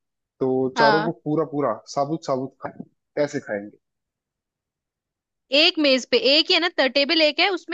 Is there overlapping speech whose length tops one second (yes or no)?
no